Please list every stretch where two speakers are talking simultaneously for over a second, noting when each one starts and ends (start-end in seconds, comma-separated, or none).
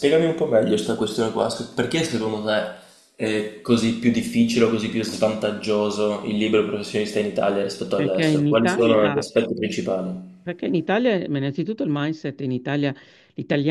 8.0-9.3